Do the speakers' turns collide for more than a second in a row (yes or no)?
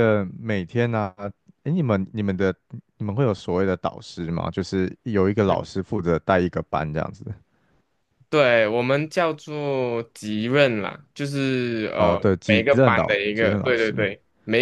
yes